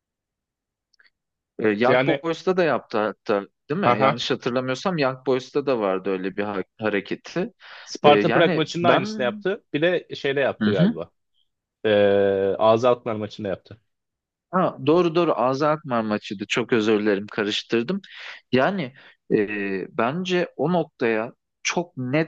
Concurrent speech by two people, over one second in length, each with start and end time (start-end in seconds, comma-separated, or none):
8.0-9.3